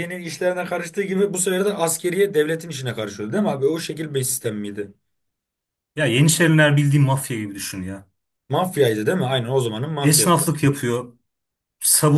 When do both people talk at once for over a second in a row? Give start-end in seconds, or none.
none